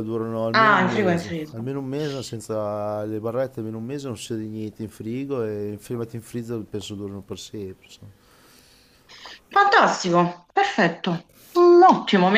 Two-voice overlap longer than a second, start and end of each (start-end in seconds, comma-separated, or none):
0.5-1.7